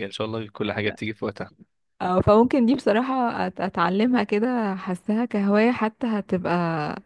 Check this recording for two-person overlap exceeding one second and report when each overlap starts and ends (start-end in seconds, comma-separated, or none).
none